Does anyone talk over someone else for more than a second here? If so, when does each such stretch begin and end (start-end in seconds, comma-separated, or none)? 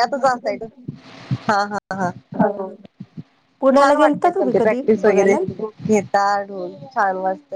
3.8-5.4